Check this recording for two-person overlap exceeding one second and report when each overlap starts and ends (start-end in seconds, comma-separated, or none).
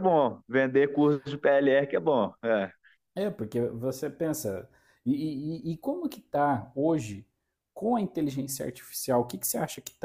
none